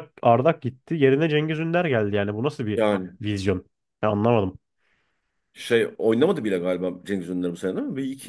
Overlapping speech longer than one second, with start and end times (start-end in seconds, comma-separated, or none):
none